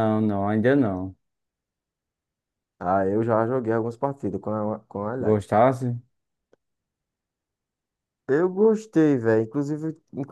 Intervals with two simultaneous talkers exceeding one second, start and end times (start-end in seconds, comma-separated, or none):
none